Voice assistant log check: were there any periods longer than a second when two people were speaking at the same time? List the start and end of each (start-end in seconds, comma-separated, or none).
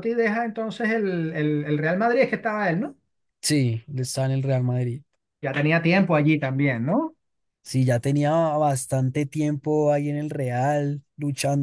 none